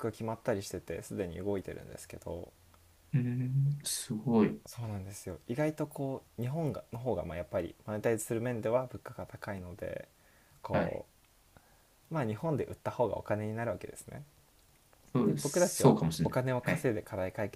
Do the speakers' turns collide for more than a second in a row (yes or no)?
yes